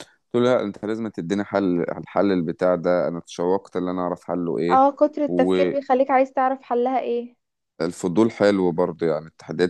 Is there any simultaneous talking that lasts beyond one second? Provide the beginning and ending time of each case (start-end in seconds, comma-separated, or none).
none